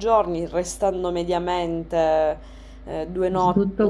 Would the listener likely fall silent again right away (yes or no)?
no